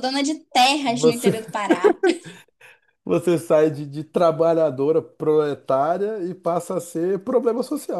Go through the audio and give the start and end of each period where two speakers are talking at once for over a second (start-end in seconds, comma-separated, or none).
none